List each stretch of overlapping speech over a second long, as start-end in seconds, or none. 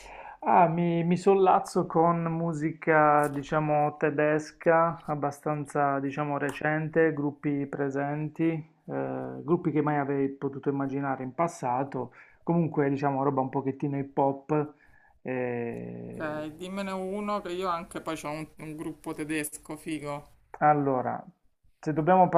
none